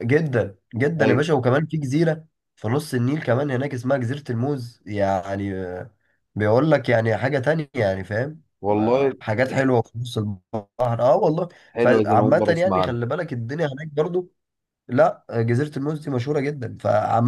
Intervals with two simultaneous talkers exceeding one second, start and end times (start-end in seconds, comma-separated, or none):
11.7-13.0